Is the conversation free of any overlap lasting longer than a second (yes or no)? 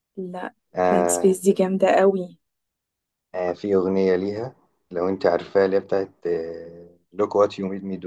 yes